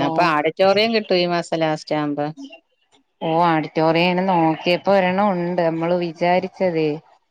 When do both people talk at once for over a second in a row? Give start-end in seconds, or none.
none